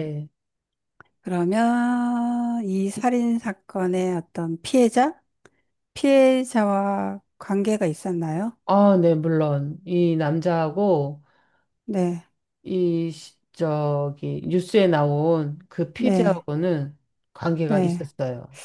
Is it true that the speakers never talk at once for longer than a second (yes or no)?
yes